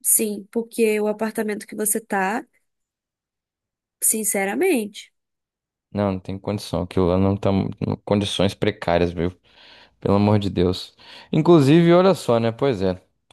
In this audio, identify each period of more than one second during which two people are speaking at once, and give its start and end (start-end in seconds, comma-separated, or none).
none